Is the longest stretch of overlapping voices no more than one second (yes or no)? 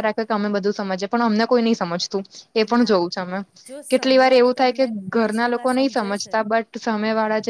no